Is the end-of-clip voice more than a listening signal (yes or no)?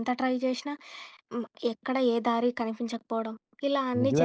yes